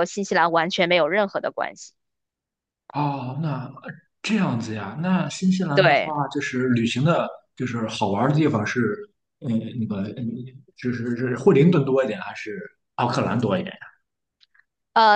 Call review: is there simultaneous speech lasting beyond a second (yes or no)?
no